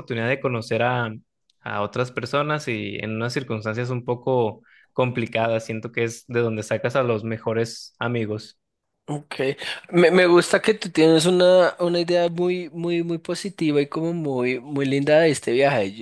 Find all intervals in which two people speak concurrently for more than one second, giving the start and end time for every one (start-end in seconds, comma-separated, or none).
none